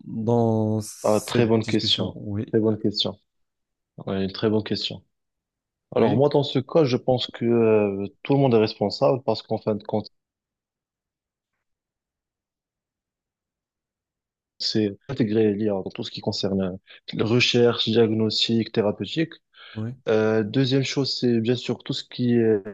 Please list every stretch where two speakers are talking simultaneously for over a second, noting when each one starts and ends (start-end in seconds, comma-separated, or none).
1.0-2.5